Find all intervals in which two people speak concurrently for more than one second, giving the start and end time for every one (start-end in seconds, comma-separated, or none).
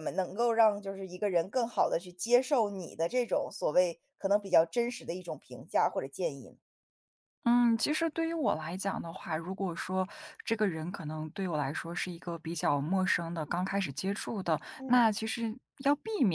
none